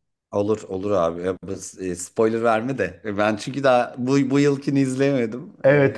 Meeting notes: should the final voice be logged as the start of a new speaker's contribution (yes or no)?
yes